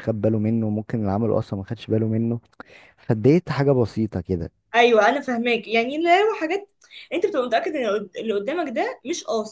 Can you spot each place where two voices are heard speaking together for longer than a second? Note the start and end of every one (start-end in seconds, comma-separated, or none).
none